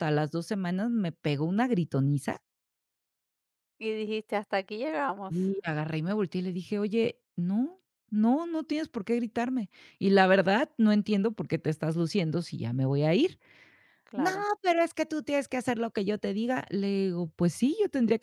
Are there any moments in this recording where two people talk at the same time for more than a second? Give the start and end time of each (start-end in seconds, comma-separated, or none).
none